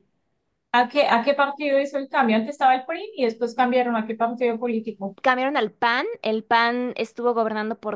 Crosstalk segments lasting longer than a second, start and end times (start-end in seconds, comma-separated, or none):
none